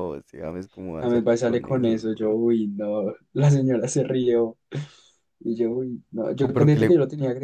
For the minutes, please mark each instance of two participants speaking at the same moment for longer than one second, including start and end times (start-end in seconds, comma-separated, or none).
1.0-2.4